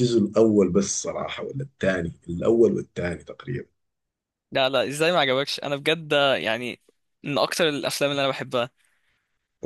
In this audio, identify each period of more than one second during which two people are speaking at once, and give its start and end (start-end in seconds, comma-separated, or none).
none